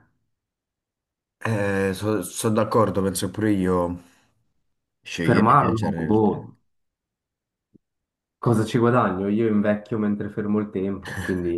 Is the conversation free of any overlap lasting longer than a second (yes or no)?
no